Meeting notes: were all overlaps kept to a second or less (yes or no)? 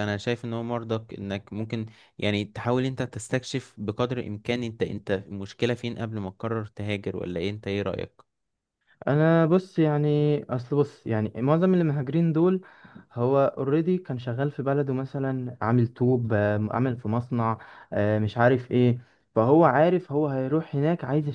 yes